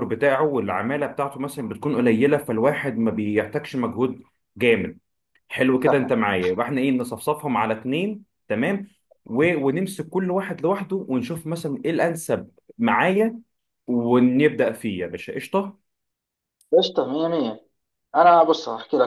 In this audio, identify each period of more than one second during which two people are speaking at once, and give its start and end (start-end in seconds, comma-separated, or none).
none